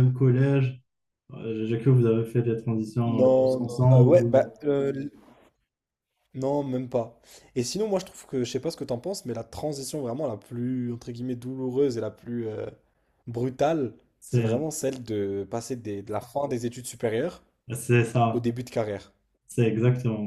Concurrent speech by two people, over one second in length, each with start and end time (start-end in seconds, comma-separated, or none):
3.1-4.5